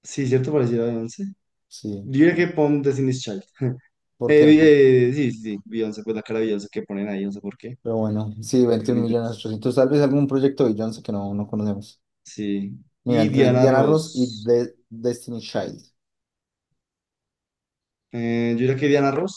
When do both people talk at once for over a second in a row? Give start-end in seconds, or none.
13.1-14.5